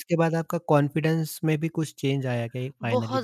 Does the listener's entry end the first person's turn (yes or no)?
yes